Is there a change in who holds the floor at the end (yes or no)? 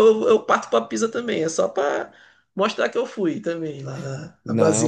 yes